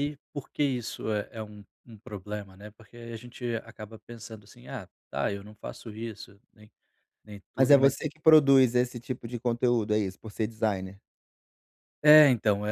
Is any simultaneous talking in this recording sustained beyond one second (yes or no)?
no